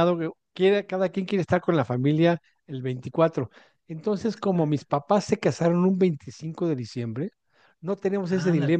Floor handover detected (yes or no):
no